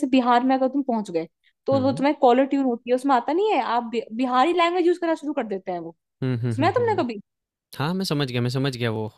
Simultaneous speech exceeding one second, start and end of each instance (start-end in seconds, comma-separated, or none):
none